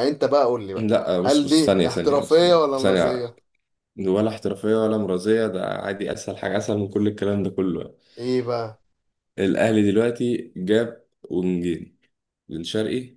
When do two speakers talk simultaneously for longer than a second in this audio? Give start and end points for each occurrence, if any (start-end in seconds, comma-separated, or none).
0.8-3.2